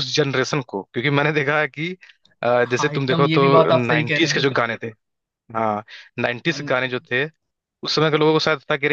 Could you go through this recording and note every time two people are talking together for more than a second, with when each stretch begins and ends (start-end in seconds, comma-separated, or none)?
2.6-4.5